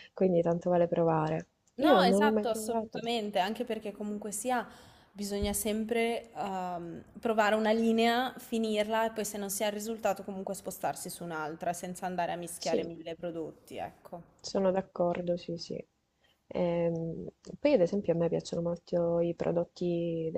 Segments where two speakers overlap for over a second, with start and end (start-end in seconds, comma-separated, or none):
1.8-3.0